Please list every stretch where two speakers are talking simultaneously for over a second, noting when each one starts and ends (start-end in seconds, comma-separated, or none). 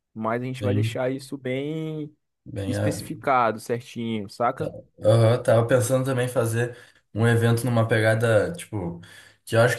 none